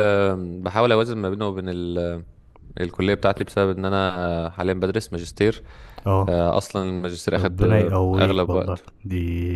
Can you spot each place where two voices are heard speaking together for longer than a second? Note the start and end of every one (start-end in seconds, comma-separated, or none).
7.4-8.8